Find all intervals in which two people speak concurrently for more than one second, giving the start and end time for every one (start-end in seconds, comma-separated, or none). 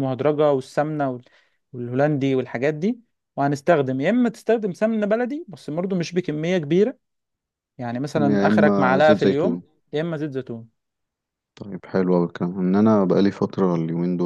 8.2-9.6